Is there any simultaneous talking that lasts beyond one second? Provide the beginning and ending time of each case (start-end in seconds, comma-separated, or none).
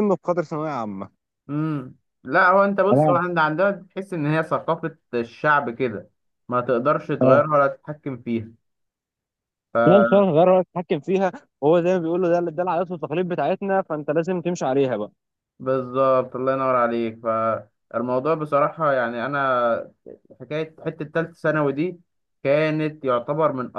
none